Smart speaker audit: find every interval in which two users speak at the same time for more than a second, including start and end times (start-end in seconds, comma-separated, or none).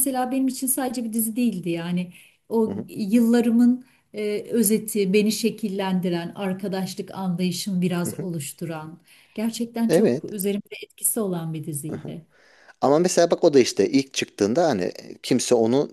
none